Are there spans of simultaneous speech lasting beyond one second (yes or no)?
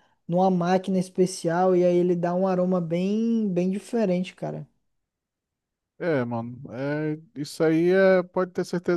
no